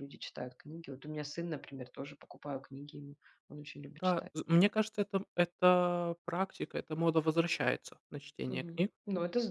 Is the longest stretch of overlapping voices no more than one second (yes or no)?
yes